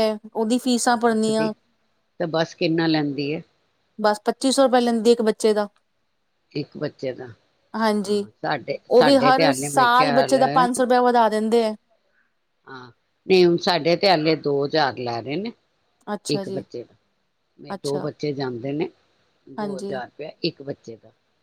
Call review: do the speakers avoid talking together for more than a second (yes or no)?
no